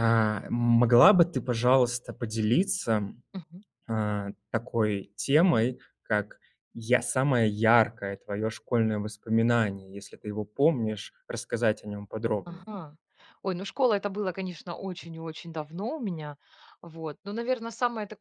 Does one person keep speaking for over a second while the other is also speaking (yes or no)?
no